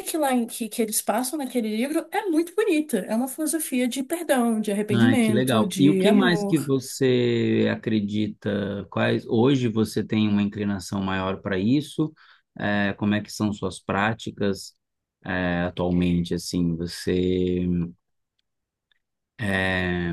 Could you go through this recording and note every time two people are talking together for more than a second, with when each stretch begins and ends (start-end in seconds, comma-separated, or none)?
4.9-6.7